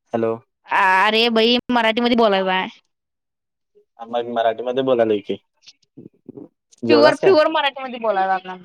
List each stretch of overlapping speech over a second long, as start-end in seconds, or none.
none